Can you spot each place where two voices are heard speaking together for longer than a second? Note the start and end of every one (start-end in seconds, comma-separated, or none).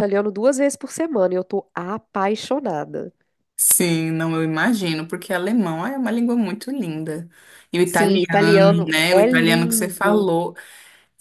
7.8-10.3